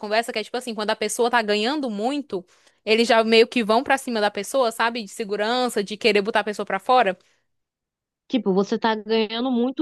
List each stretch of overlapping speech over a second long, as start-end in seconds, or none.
none